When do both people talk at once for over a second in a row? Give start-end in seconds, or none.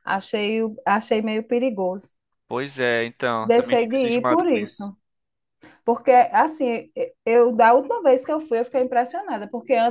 3.4-4.9